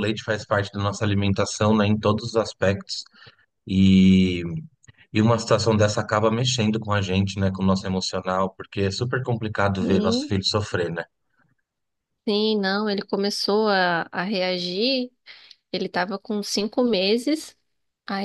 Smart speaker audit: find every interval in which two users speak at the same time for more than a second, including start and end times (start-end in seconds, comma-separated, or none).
none